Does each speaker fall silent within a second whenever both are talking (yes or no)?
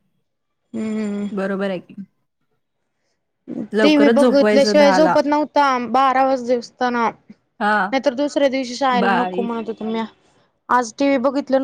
no